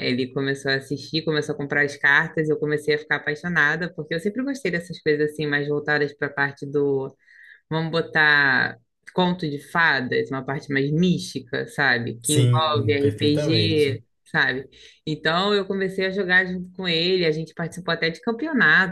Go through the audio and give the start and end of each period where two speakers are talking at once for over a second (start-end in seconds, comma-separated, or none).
12.2-14.0